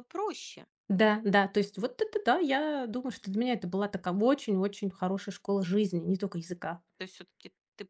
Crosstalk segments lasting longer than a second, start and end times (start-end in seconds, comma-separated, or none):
none